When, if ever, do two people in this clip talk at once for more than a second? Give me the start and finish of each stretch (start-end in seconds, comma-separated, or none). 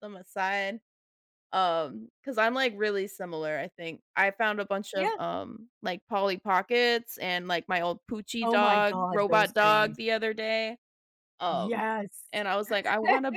8.4-10.0